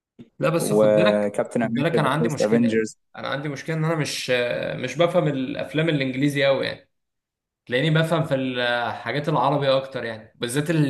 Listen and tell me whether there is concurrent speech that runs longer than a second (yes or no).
yes